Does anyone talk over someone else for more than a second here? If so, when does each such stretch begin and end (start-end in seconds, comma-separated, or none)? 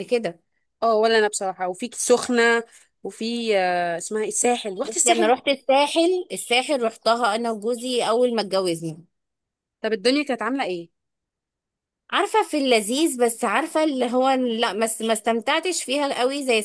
none